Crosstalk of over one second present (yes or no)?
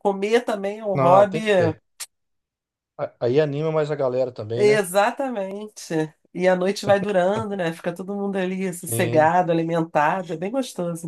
no